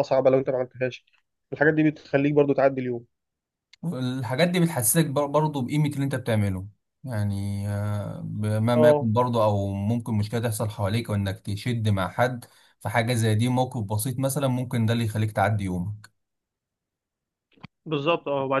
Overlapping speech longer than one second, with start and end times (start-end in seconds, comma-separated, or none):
none